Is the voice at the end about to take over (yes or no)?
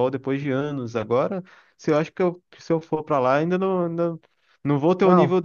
no